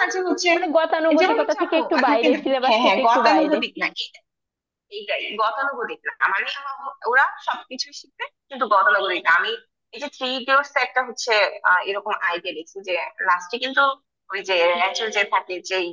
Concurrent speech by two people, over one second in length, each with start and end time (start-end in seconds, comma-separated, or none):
1.2-3.6